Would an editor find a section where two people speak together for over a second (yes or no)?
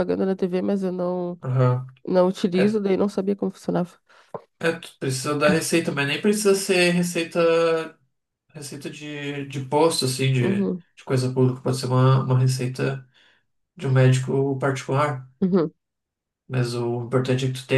no